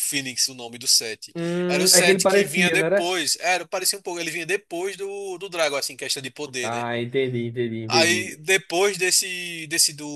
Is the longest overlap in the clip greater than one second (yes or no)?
yes